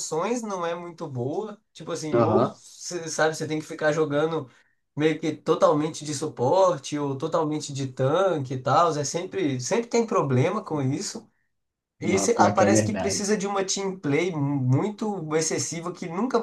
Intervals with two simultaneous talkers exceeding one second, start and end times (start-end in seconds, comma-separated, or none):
12.0-13.2